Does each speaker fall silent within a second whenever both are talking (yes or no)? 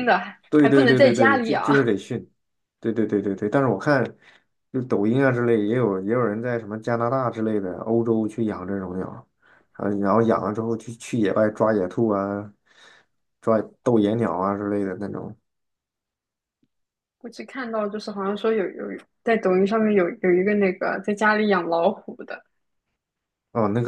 no